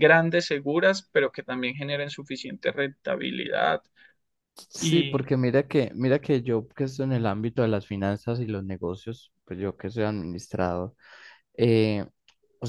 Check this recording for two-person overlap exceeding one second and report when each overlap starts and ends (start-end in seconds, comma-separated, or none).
none